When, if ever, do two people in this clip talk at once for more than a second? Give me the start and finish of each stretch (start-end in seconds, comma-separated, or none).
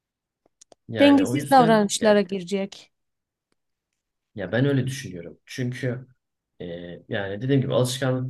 1.0-2.2